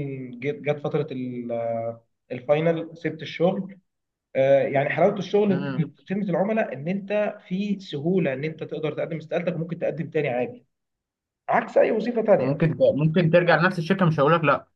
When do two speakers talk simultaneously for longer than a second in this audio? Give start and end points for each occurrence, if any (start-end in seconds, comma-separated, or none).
none